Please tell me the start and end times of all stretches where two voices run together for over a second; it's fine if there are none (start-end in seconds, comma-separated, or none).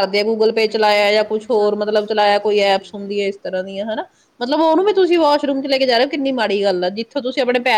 0.6-2.9